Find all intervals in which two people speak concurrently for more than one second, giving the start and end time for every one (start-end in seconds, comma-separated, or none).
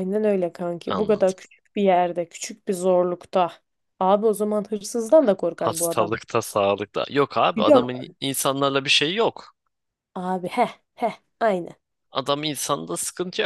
none